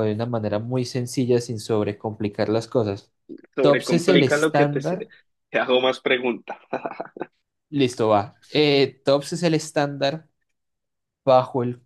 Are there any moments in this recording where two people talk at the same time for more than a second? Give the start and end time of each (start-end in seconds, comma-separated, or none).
3.6-5.1